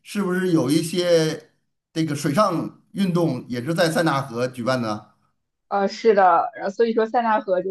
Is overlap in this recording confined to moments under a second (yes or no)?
yes